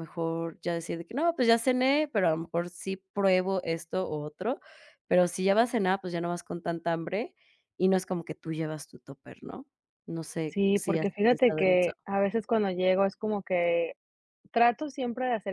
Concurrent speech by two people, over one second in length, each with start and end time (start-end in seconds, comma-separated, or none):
10.5-11.9